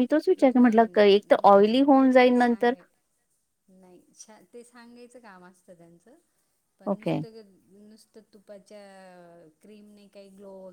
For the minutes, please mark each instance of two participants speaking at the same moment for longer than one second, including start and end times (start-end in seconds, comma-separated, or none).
0.6-2.7